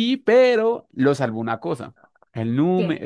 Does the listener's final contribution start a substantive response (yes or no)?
no